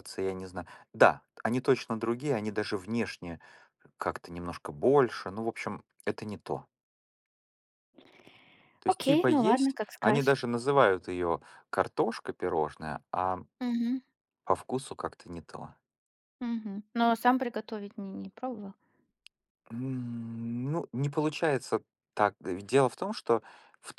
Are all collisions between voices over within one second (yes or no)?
no